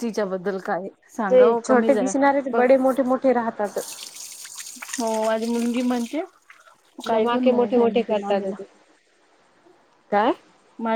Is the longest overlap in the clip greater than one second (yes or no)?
yes